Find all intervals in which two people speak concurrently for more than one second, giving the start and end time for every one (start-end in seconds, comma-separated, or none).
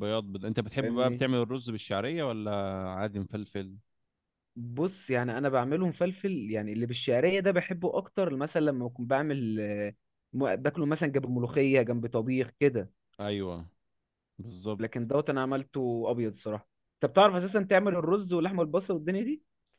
none